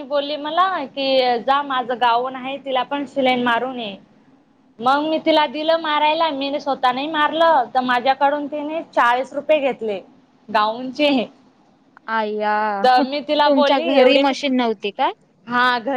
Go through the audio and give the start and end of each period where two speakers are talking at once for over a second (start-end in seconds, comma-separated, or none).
13.0-14.5